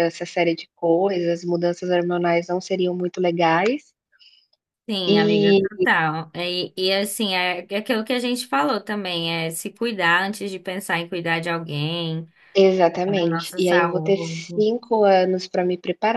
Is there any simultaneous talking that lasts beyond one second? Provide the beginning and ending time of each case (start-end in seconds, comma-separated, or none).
13.1-14.4